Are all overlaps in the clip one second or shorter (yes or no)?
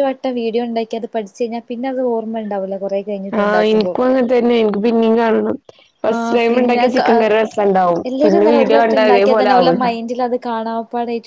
yes